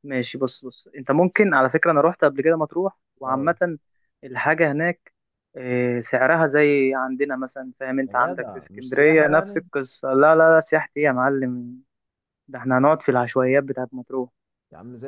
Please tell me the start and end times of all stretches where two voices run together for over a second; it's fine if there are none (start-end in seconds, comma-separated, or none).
8.1-9.6